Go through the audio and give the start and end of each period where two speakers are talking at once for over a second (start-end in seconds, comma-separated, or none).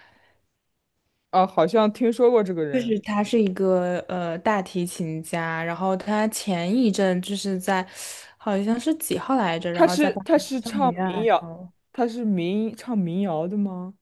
9.7-11.5